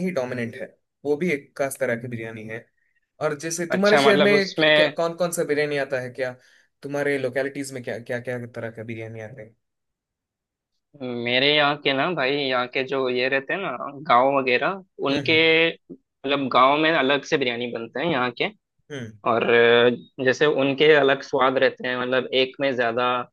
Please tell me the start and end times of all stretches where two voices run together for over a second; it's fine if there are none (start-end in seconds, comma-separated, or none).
3.7-5.0